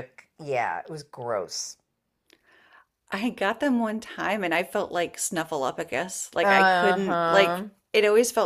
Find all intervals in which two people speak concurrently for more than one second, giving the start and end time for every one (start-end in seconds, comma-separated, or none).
6.4-7.7